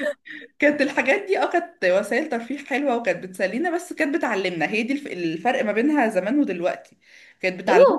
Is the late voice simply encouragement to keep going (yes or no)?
no